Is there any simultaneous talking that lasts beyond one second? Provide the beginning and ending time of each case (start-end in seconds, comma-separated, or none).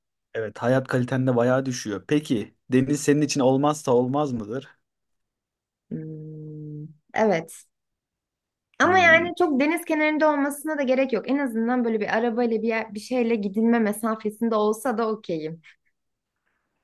none